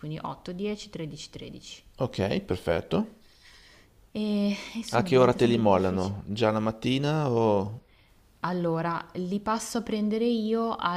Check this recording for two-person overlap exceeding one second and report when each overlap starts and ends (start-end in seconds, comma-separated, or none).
5.0-6.2